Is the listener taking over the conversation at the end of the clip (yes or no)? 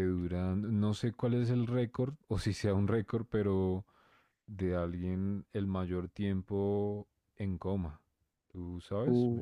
yes